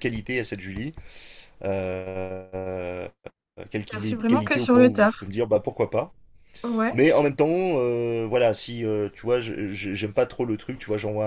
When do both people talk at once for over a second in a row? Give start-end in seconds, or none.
3.9-5.3